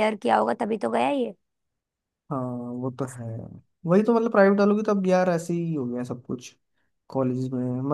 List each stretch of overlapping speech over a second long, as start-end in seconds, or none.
none